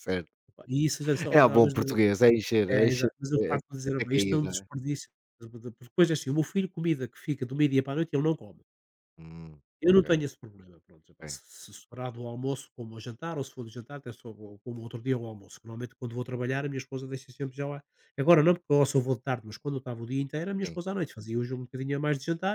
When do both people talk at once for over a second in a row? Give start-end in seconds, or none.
2.7-4.7